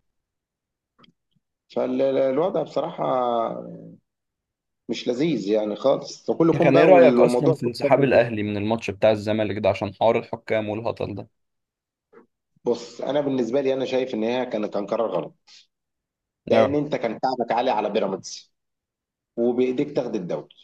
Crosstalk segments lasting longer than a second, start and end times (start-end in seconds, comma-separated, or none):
6.5-8.2